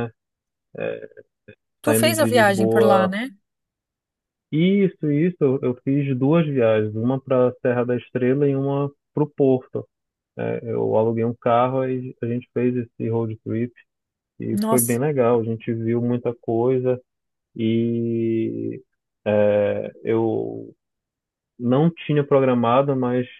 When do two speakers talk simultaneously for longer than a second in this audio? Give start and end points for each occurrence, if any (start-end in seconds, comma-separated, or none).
1.8-3.1